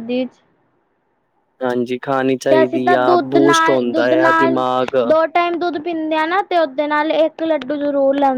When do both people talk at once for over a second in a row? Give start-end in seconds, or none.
2.5-4.6